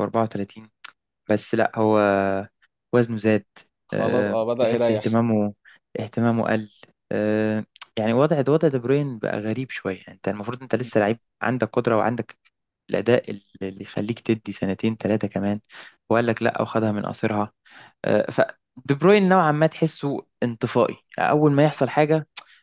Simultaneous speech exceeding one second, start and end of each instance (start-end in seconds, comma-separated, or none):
3.9-5.2